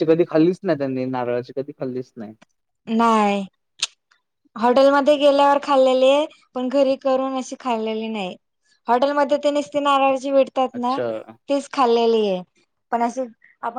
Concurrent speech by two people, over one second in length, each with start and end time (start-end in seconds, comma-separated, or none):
none